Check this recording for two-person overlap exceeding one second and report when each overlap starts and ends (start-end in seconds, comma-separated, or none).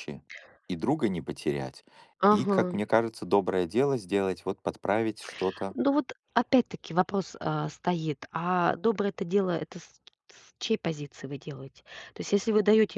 none